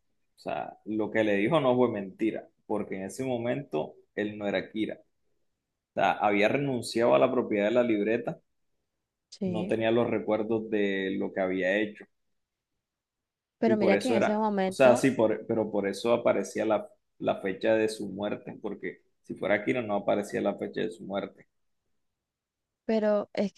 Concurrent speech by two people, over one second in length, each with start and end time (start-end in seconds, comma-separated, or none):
13.7-15.1